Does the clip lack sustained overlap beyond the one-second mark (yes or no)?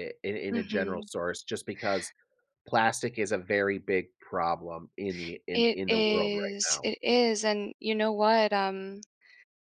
no